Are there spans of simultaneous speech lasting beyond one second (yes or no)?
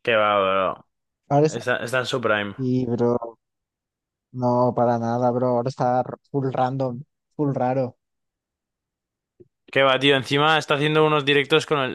no